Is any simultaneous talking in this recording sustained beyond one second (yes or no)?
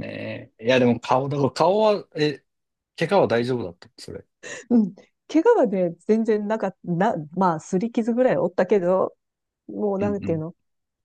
no